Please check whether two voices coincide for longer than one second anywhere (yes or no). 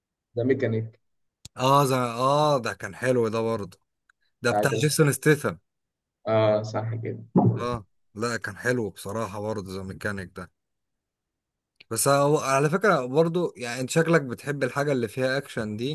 no